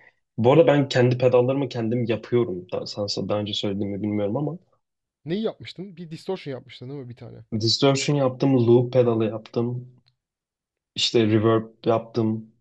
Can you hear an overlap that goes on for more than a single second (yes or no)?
no